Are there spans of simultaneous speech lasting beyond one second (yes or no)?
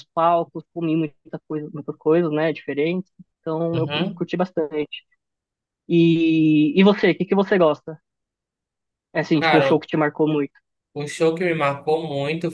no